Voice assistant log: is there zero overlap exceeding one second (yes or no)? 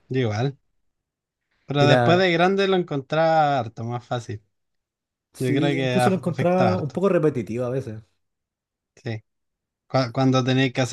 no